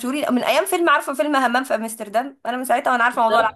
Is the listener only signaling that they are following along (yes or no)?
no